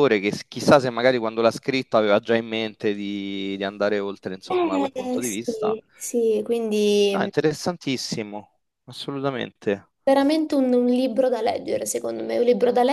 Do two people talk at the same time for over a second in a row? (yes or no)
yes